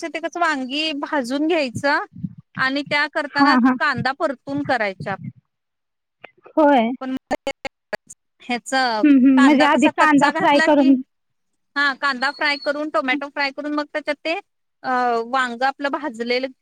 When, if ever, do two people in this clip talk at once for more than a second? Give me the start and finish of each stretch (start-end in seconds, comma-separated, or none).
9.4-10.9